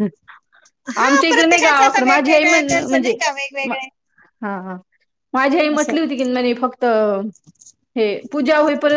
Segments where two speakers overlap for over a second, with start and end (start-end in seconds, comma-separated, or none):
1.0-3.1